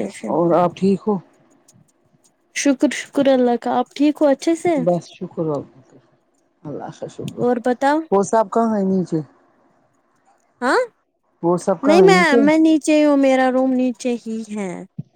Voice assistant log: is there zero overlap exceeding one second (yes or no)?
yes